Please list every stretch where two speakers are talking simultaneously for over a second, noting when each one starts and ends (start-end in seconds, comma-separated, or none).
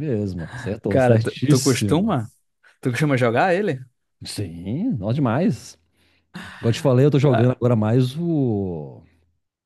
0.9-2.1